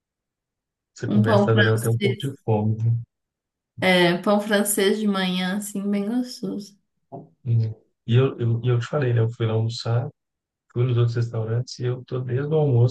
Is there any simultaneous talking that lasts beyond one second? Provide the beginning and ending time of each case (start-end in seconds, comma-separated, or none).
1.1-2.3